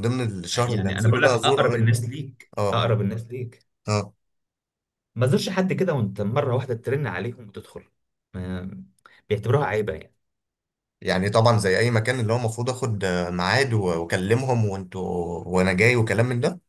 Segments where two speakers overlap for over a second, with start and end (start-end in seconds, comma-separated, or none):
0.7-1.9